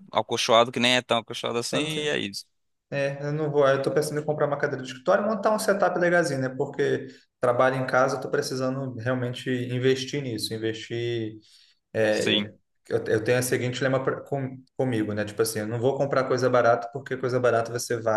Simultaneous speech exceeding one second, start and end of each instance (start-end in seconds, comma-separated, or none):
none